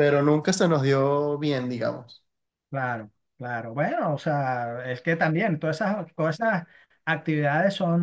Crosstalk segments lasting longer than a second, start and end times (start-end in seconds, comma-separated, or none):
none